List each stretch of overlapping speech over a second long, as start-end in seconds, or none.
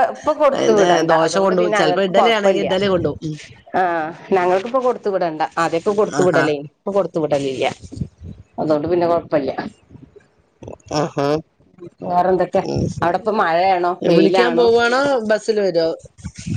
0.6-2.7